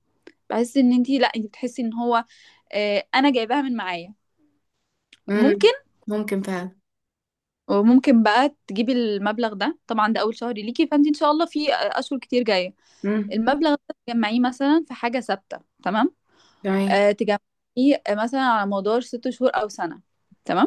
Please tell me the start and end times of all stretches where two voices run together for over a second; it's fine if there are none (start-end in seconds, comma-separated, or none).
none